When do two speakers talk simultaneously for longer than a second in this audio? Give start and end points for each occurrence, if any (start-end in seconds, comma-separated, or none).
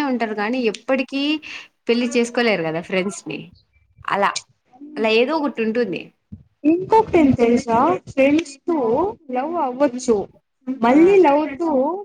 none